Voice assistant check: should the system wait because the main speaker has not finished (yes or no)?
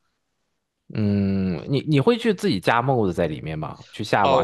no